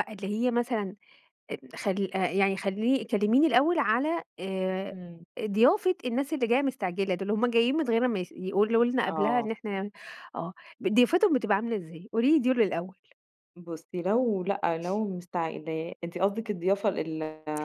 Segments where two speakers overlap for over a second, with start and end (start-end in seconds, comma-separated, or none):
none